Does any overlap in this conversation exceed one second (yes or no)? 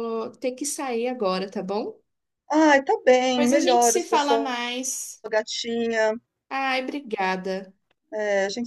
yes